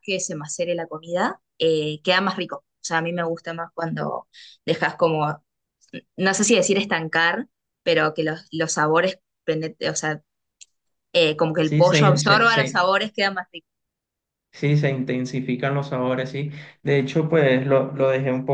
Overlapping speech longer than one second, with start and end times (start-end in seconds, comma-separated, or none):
11.6-12.8